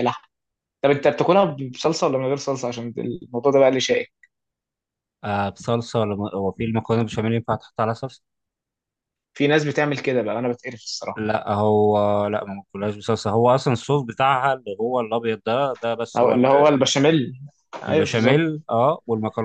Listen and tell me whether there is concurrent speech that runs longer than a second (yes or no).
no